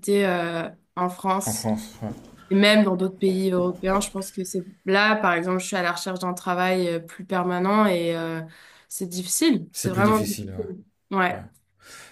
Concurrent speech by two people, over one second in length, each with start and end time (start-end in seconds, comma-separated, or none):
9.7-11.4